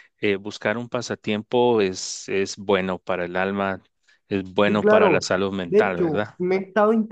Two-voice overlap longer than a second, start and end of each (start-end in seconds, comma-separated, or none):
4.7-6.4